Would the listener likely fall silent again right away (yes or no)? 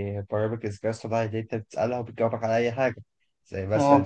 yes